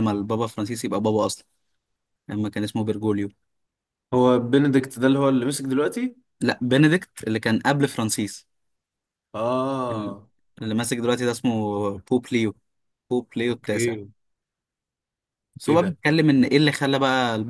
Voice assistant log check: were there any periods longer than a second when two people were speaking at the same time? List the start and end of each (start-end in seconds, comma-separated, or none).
none